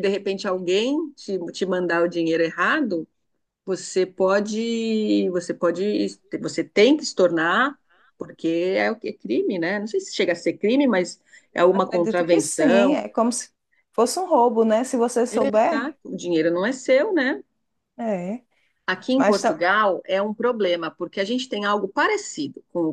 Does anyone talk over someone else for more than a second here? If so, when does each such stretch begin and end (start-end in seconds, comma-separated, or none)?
11.7-13.0